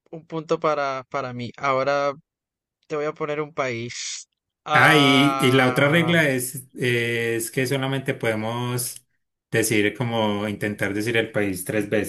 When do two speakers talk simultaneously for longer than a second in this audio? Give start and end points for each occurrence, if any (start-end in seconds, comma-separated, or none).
4.7-6.1